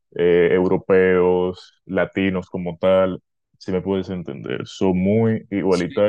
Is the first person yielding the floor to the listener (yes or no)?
no